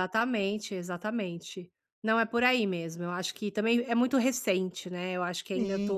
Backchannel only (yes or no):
no